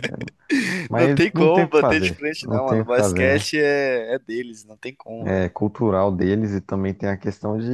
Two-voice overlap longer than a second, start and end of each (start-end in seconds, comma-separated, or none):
0.9-3.5